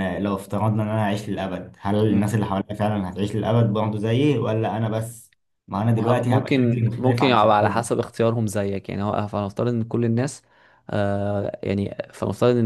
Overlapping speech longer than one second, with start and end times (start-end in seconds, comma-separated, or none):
5.9-7.9